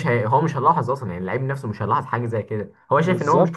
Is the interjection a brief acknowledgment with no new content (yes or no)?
no